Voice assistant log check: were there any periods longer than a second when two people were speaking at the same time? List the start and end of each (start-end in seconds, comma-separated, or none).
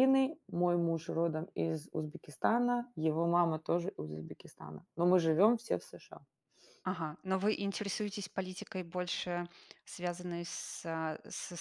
none